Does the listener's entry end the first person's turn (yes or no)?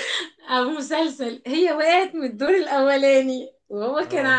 no